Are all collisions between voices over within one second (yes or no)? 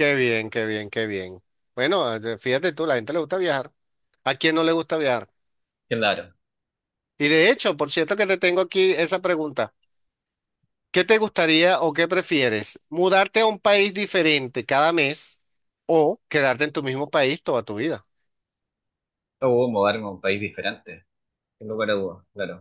yes